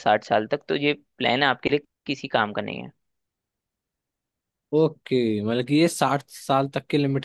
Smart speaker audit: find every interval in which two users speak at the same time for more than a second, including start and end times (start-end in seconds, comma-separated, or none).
none